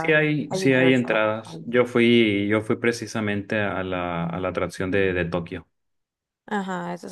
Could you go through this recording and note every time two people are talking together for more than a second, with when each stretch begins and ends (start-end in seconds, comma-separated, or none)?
0.5-1.7